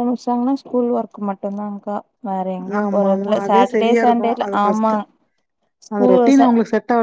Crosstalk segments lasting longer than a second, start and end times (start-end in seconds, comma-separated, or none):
2.8-5.0